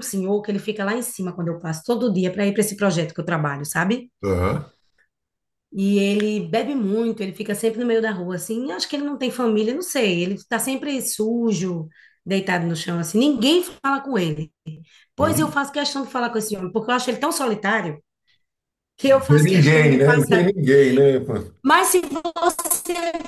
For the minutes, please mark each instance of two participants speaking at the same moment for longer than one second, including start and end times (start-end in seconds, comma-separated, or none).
19.1-20.5